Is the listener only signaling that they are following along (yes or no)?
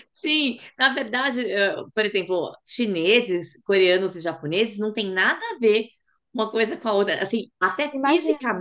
yes